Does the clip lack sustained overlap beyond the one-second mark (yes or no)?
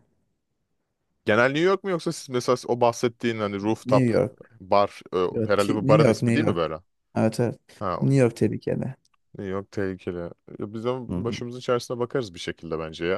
no